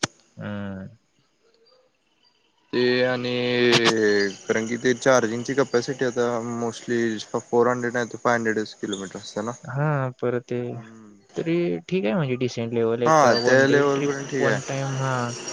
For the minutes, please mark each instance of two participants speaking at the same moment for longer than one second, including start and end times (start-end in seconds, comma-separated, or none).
13.1-14.8